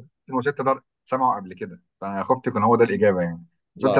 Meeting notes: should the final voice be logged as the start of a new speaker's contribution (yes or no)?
no